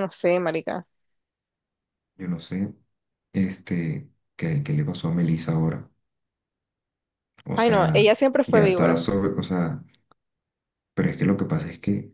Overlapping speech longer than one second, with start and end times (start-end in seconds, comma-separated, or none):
7.5-9.0